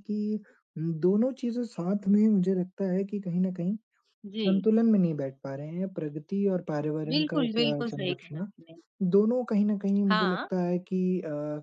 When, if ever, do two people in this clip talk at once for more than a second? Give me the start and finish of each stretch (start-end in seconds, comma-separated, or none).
7.1-8.5